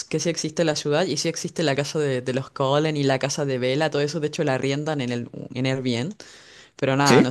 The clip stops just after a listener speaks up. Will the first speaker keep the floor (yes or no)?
yes